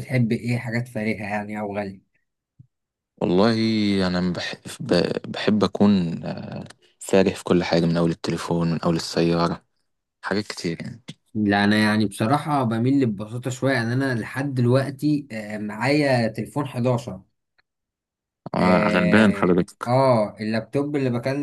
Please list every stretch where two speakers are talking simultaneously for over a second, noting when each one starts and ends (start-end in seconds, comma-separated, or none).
18.6-19.9